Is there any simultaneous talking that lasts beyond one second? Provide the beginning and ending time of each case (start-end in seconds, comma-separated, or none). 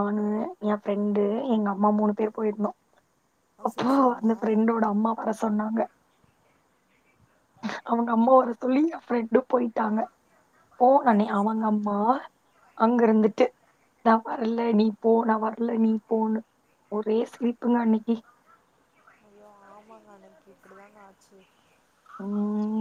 none